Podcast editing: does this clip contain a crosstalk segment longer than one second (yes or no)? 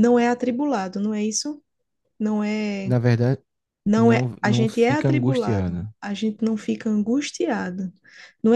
yes